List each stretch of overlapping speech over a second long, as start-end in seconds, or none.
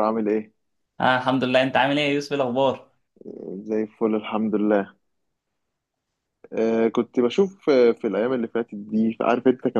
none